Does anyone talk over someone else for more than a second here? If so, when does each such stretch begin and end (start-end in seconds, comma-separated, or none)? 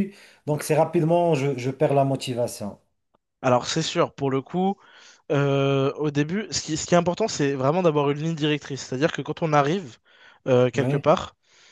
none